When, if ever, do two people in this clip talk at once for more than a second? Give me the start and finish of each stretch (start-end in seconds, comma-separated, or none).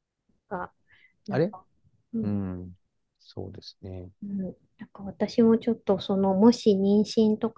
none